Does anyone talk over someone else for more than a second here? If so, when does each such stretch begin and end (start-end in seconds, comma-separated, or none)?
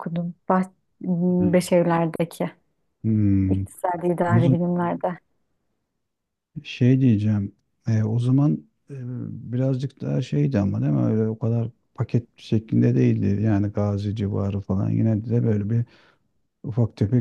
none